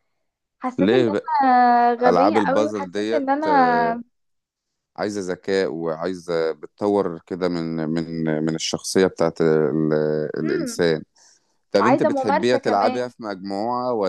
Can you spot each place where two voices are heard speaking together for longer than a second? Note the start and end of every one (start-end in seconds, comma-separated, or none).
2.1-4.0, 11.8-13.1